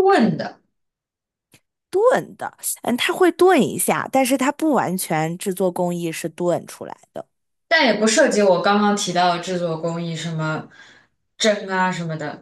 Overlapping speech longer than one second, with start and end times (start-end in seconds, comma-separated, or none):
none